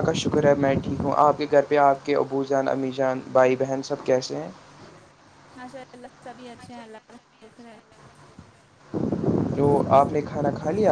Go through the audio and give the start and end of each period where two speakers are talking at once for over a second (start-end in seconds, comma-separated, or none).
none